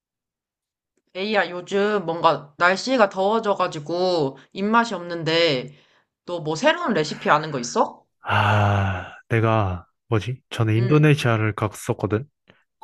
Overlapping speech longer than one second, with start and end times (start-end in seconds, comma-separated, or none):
none